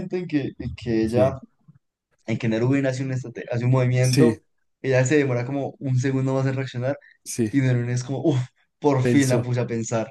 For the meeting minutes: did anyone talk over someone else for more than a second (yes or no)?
no